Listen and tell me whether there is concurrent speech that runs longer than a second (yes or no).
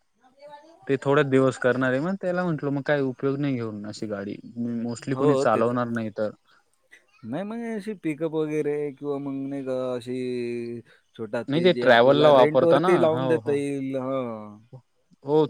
yes